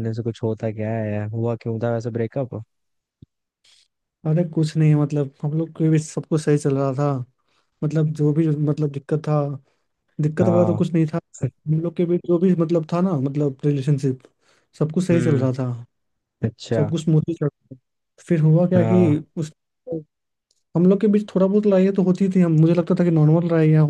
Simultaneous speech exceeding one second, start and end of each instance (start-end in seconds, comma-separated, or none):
none